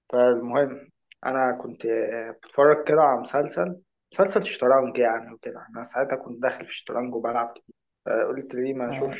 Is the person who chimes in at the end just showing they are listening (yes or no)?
no